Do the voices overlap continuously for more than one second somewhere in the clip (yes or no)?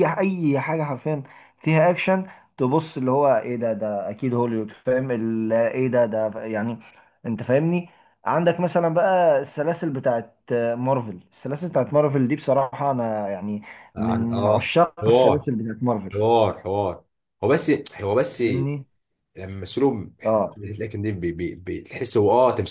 yes